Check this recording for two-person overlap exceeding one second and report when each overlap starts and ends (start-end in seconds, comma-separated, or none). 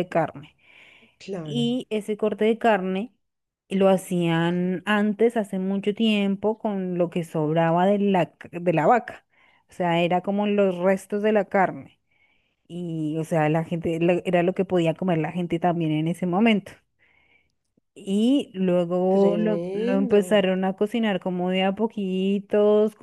19.1-20.4